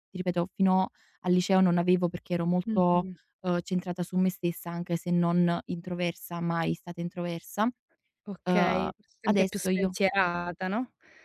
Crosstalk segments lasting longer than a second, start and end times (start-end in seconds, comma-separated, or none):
8.4-9.9